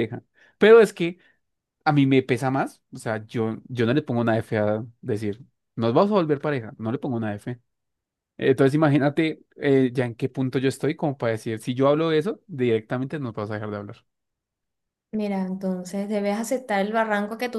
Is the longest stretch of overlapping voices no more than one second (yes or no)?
yes